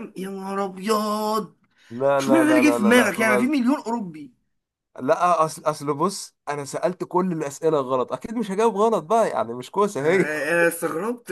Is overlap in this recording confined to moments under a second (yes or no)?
no